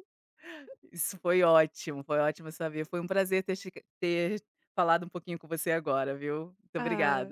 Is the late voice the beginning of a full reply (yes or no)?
yes